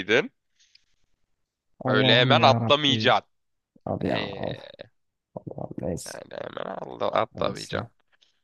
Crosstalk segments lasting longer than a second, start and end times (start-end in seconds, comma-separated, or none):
1.9-3.2